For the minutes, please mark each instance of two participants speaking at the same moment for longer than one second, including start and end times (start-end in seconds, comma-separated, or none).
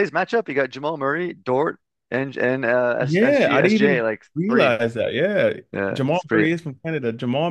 3.0-4.7